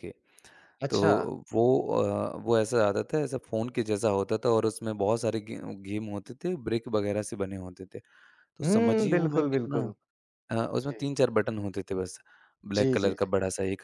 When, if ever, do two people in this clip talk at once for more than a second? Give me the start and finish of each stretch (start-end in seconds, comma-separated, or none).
8.6-9.8